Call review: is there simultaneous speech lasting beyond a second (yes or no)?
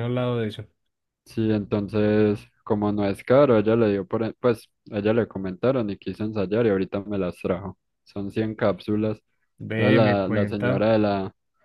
yes